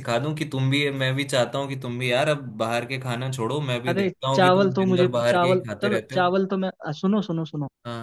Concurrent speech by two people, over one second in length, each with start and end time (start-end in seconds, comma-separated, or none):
3.9-6.3